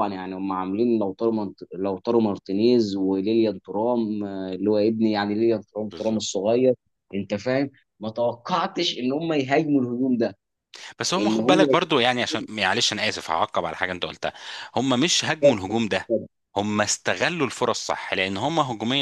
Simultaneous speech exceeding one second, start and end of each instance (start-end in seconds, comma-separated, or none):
none